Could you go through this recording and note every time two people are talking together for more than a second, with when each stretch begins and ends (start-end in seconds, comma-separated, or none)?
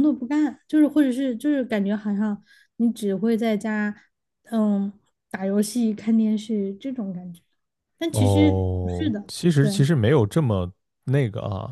8.1-9.9